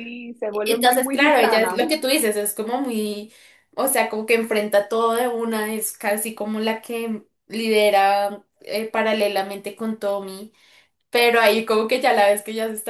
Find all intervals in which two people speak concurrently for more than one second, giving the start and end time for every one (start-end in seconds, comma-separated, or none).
0.7-2.0